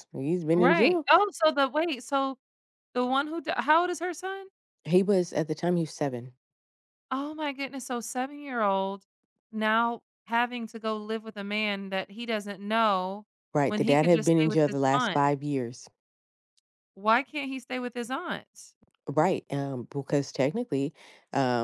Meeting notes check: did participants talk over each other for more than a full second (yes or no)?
yes